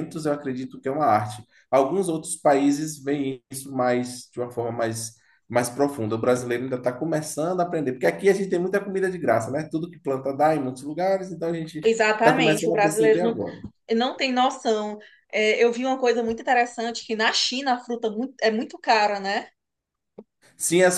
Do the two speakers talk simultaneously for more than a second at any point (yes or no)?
yes